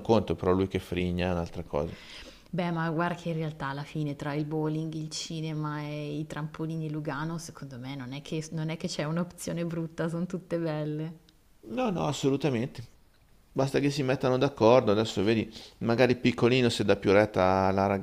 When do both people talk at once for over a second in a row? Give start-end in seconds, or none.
none